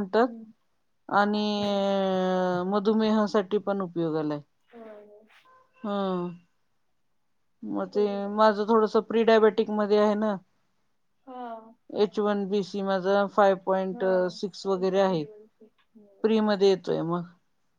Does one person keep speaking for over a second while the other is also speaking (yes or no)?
no